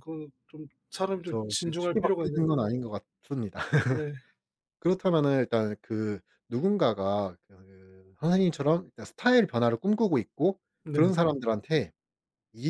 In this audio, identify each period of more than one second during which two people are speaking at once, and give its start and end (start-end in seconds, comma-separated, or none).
1.1-2.5